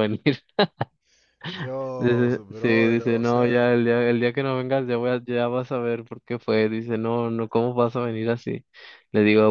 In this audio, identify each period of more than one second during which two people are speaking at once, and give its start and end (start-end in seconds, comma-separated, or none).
2.0-3.7